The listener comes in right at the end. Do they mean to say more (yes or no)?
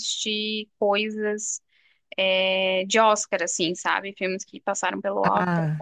yes